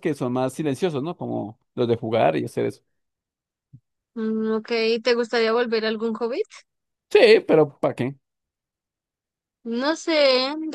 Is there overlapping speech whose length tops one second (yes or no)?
no